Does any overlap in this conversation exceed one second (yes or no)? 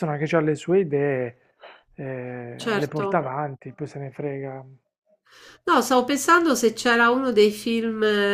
no